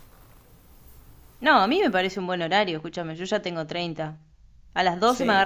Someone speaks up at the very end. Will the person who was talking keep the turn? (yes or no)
yes